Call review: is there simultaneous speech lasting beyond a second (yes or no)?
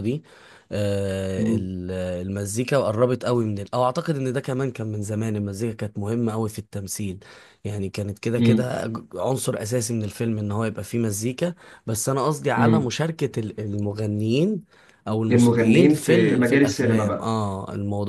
yes